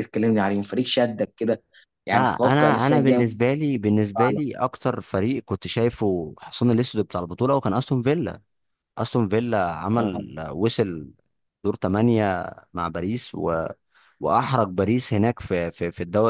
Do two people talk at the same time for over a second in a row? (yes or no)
yes